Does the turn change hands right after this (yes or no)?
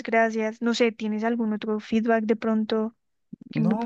yes